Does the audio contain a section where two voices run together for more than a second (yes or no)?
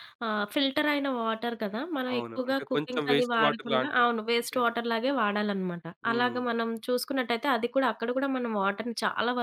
yes